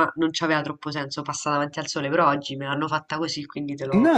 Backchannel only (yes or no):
no